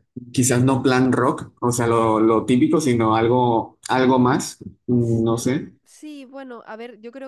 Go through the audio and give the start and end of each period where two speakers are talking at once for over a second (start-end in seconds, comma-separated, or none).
none